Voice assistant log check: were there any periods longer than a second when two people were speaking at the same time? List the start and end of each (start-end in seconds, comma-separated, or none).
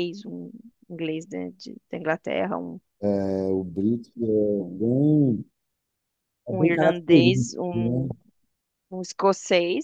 6.5-8.1